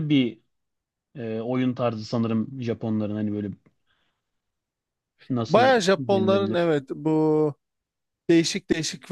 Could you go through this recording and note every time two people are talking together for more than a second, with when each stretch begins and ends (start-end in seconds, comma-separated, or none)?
5.5-6.7